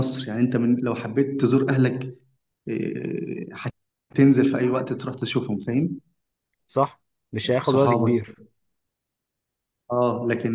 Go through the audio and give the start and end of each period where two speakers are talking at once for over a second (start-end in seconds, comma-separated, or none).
none